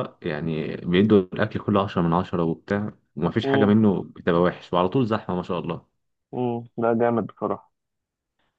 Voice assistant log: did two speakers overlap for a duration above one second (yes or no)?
no